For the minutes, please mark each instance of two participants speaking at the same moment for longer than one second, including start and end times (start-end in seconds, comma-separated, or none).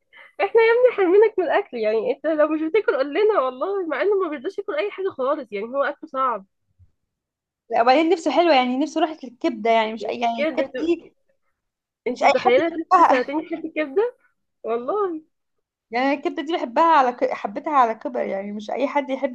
12.1-13.3